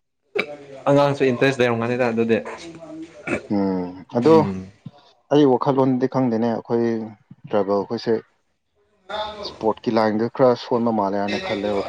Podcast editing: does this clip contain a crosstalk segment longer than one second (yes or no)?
no